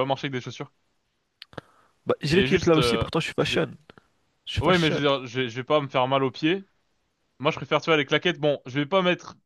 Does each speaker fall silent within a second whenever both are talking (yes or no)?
no